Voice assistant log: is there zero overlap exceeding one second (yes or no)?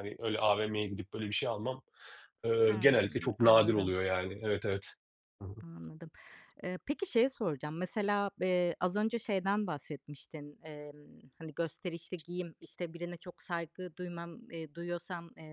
no